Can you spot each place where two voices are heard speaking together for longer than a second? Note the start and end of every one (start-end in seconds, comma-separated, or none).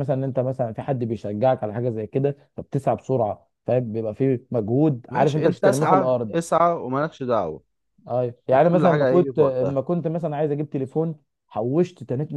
5.1-6.3, 8.5-9.8